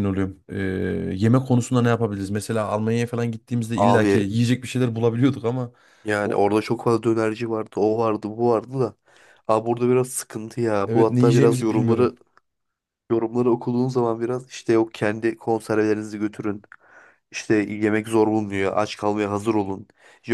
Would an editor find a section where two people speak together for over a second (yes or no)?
yes